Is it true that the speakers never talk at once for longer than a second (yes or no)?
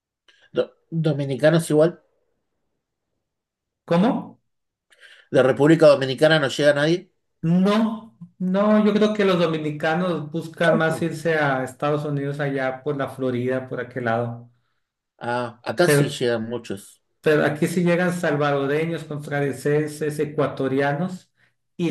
yes